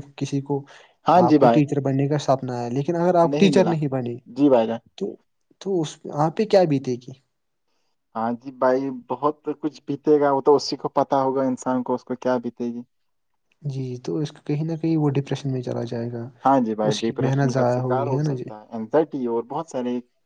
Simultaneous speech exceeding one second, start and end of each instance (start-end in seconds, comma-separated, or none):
16.9-18.4